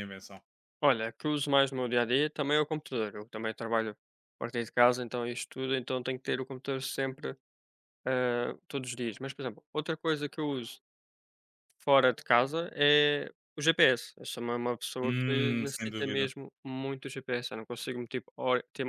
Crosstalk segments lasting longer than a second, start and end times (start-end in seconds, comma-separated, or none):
15.0-16.3